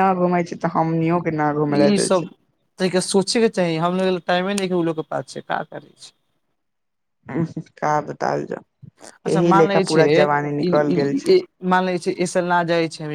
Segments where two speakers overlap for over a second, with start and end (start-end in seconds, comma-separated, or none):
9.3-11.4